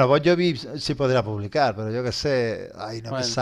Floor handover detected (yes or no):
no